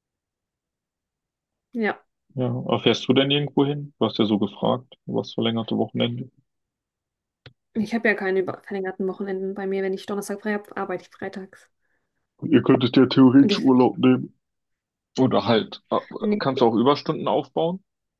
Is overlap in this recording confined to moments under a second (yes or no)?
yes